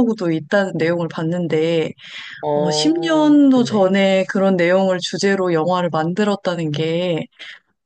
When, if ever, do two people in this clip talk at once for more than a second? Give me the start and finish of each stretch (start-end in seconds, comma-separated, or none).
2.5-4.0